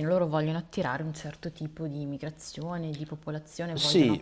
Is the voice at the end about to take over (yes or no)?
yes